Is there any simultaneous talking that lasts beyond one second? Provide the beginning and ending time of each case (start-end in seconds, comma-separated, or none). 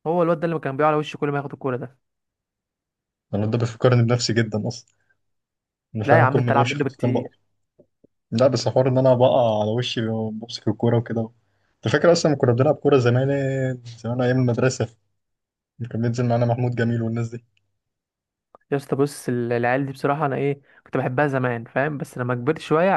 6.0-7.3